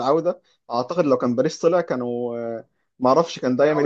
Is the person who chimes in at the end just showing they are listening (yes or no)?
yes